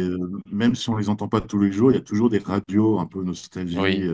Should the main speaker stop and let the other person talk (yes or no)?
no